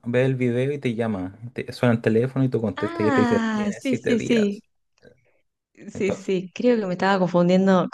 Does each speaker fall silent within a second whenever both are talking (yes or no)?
no